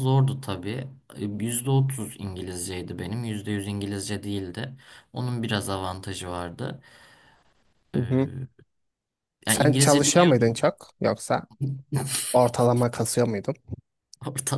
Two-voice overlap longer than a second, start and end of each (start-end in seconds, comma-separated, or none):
9.5-10.7